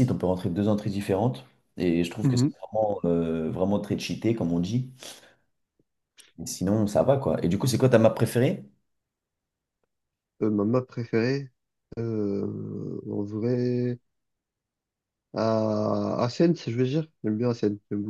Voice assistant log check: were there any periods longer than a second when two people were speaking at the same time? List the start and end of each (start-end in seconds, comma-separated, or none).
none